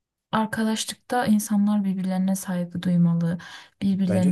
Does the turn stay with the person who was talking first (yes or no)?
no